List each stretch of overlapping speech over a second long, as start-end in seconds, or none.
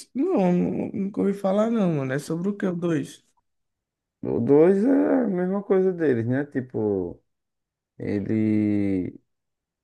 none